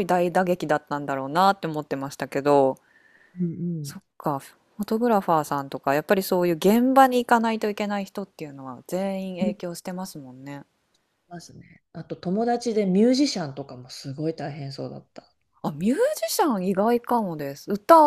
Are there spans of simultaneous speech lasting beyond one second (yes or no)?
no